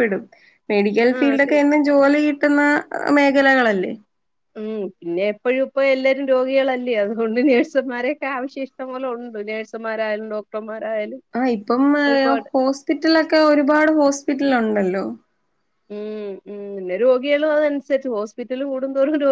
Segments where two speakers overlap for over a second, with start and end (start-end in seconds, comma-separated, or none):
none